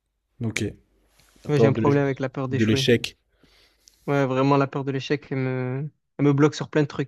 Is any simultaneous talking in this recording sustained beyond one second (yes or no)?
yes